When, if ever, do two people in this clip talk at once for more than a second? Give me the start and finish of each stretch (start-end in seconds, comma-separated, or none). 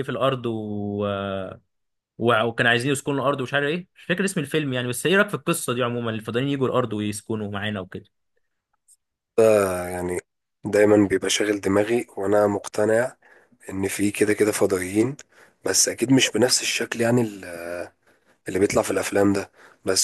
none